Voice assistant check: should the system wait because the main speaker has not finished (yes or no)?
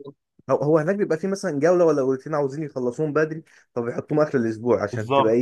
yes